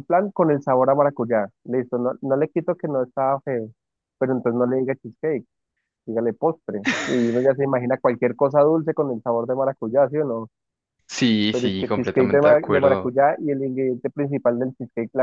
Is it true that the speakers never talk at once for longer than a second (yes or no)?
no